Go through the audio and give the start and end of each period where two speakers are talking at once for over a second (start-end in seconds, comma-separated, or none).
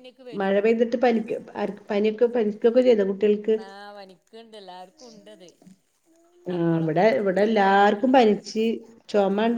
6.5-8.3